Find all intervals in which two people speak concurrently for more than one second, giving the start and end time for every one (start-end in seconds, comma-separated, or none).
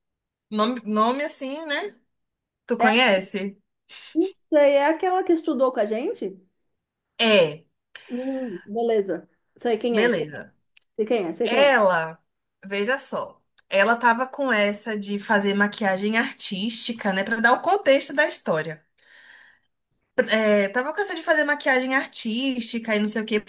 none